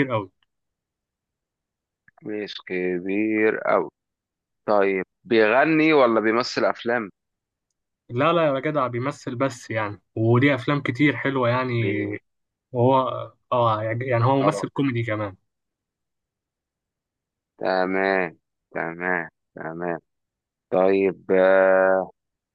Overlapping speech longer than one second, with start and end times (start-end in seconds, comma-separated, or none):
none